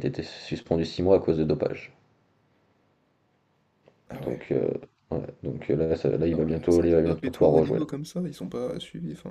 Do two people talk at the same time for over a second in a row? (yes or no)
yes